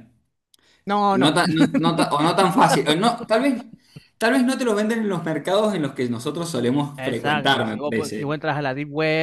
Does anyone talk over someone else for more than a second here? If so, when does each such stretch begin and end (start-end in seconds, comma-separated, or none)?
7.0-8.4